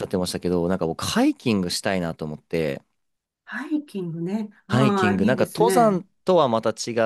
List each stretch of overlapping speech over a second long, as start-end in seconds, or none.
4.7-6.0